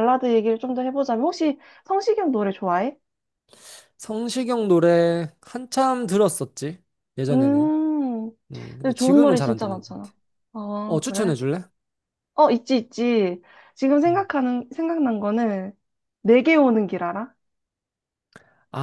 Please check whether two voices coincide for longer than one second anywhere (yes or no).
yes